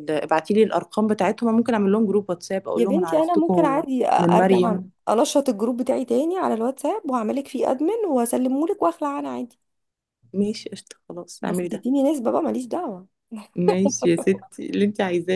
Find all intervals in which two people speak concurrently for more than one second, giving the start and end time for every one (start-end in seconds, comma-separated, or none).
2.8-4.9